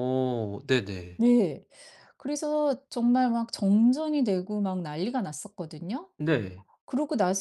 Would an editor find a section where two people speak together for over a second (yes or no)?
no